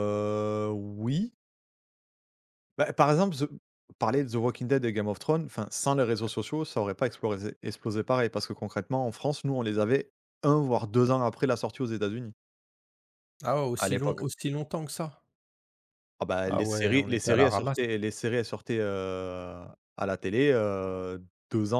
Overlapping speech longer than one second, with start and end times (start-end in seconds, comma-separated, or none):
16.4-17.8